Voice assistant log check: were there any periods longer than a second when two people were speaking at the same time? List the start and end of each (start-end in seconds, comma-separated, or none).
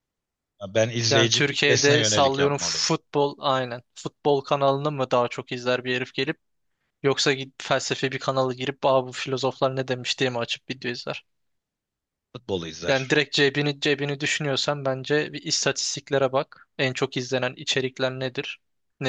1.1-2.9